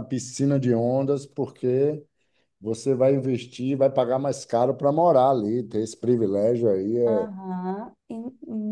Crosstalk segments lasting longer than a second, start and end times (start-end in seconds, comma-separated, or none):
none